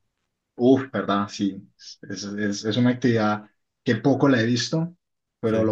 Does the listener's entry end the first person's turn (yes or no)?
no